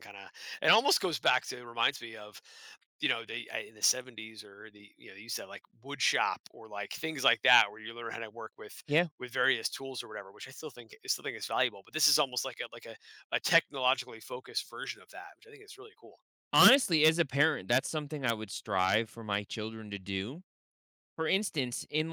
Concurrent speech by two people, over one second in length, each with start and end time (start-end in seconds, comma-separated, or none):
none